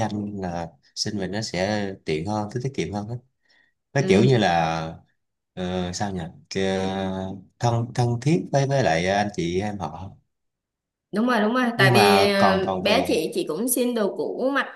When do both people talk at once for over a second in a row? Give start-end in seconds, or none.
11.8-13.2